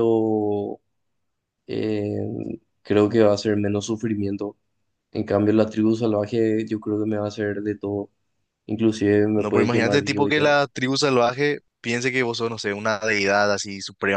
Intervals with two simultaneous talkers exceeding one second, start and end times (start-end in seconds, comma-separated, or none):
9.4-10.6